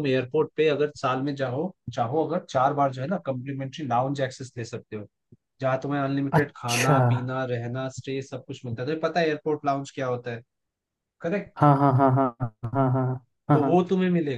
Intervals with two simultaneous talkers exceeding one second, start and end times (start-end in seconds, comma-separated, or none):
none